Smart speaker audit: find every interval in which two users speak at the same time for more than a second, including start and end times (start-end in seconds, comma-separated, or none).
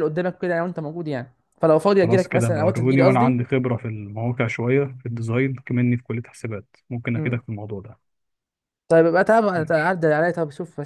2.0-3.4